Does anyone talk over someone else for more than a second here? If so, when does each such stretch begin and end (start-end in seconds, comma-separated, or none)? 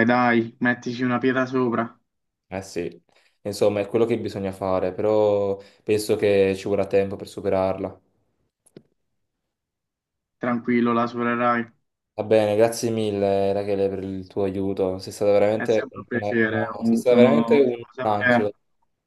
15.5-18.5